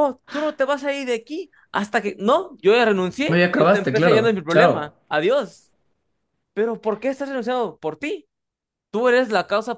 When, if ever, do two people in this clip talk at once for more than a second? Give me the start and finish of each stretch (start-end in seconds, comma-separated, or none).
3.3-4.9